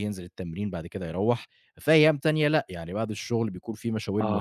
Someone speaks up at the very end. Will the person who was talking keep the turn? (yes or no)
no